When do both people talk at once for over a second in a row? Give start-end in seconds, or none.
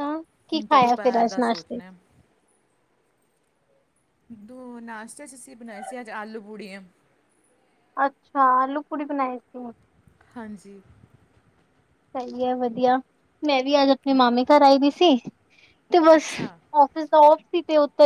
0.5-1.8